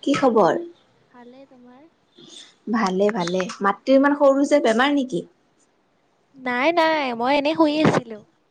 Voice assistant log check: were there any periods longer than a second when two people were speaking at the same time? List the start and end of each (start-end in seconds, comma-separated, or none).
none